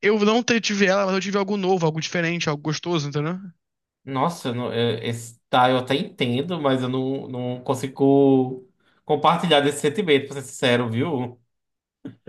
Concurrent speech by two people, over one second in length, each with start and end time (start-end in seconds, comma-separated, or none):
none